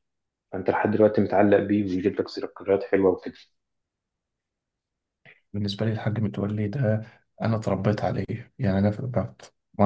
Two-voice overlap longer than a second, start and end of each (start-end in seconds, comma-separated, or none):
none